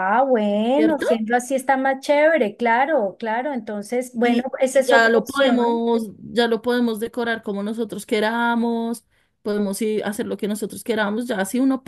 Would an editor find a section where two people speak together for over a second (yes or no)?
yes